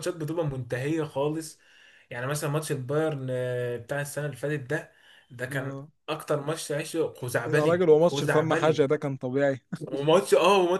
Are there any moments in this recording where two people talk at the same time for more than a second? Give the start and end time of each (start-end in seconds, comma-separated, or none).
7.5-8.9